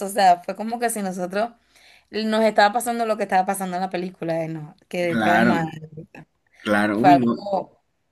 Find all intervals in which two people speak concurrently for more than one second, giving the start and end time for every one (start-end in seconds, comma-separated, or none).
none